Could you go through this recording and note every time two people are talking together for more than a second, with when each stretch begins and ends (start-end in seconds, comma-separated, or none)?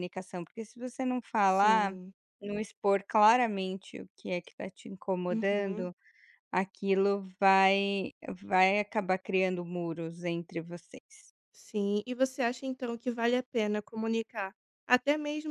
none